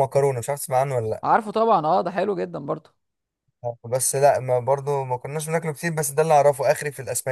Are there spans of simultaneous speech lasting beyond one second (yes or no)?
no